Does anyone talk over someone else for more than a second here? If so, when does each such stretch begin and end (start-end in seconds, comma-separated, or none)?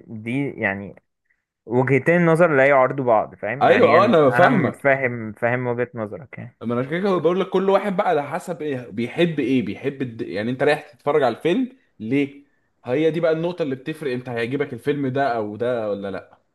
3.6-5.0